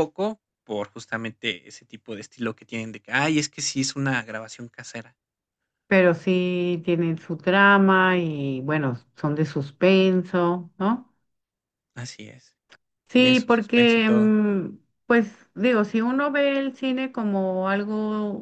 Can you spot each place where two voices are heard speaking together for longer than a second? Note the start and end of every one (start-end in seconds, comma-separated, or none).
13.1-14.3